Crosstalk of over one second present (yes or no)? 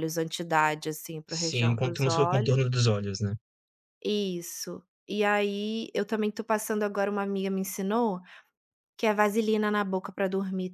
yes